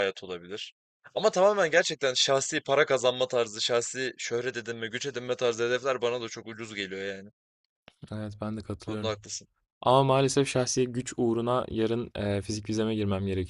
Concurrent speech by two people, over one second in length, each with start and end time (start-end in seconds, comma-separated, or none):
none